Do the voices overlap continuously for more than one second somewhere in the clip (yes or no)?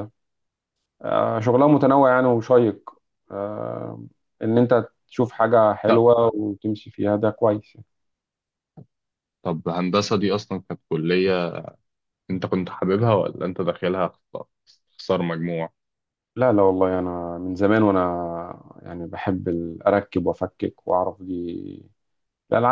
no